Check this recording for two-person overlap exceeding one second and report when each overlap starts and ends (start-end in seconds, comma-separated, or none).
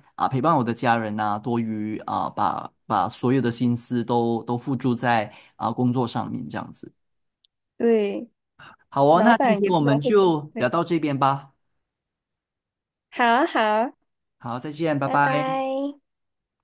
9.1-10.7